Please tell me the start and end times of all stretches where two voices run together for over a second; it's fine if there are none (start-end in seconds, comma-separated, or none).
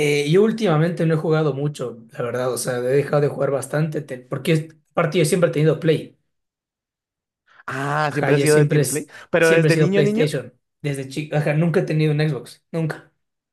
8.1-10.3